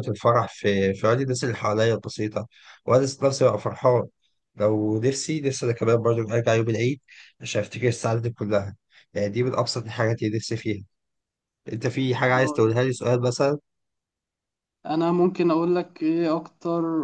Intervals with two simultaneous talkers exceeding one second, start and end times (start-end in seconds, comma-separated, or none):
none